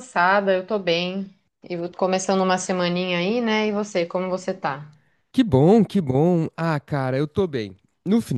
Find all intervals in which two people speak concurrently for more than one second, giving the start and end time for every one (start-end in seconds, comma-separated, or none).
none